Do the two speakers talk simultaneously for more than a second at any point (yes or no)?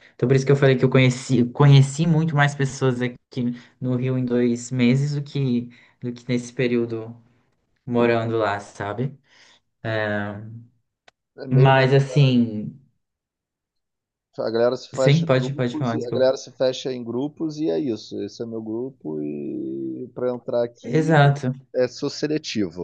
yes